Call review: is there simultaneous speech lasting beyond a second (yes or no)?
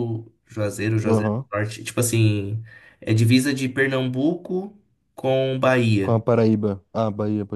no